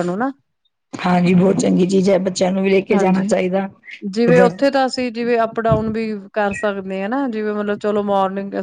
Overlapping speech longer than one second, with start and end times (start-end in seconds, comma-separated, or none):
none